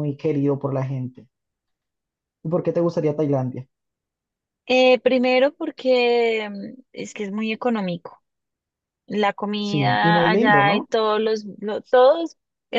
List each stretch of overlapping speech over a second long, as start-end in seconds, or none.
9.6-10.9